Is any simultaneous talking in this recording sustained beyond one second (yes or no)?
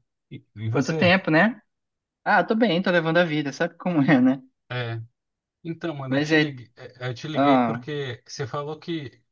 no